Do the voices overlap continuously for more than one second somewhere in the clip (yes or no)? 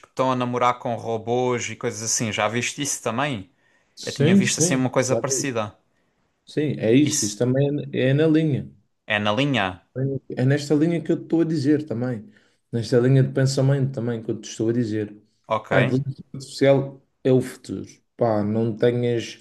yes